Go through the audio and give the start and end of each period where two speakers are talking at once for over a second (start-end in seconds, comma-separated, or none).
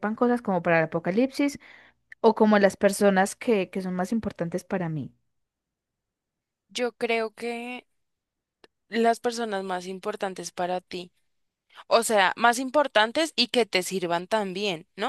none